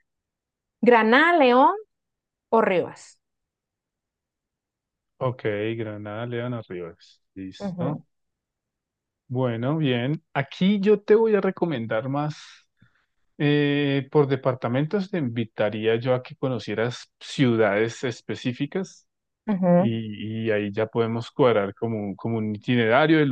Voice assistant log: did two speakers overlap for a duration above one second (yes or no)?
no